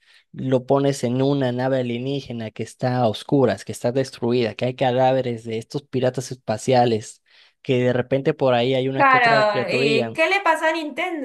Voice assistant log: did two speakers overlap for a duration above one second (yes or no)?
yes